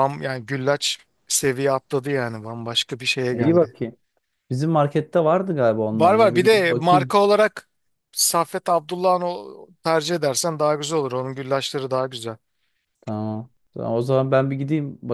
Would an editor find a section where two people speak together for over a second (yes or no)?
yes